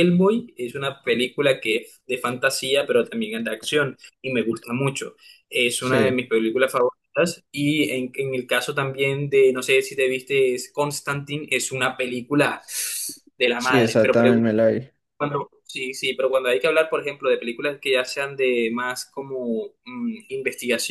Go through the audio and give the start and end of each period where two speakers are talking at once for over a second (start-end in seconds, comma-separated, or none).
none